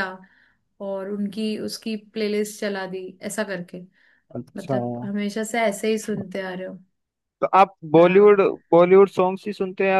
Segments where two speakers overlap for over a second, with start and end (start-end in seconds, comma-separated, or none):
none